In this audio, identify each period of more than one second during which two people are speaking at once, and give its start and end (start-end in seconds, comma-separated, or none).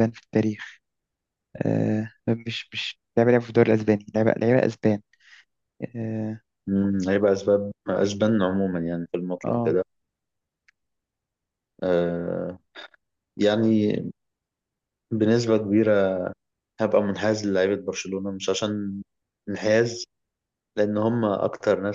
none